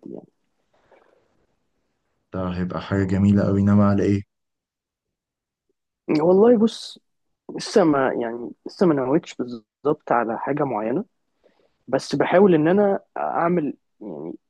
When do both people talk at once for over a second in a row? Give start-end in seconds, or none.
none